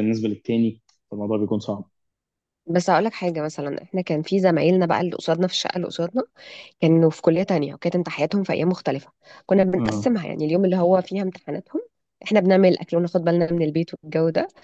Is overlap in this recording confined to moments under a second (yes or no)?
yes